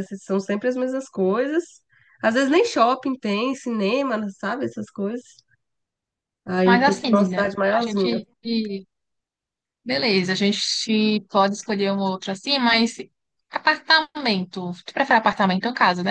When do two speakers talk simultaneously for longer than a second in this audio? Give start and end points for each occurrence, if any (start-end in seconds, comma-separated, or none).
6.6-8.2